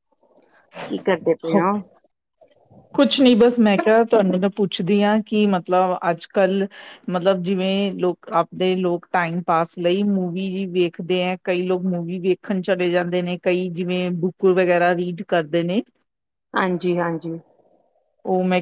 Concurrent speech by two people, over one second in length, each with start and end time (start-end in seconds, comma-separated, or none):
none